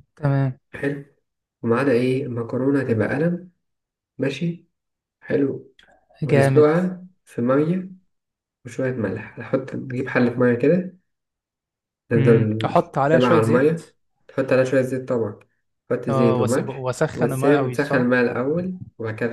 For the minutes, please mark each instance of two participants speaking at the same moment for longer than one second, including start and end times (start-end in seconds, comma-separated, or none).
12.2-13.8, 16.1-18.1